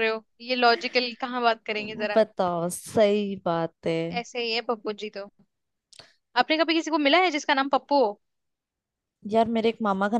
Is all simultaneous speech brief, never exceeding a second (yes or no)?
yes